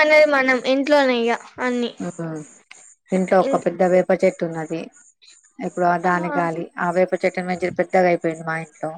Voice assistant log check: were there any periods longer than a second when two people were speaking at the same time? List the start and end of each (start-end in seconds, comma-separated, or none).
none